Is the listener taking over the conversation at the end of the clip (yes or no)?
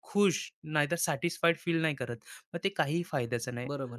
yes